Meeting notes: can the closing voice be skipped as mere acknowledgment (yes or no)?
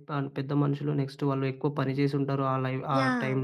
no